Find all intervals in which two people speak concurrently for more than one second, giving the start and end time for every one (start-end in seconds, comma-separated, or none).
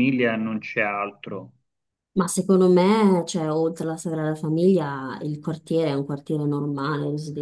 none